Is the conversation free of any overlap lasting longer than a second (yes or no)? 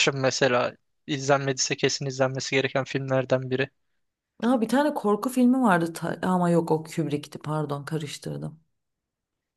yes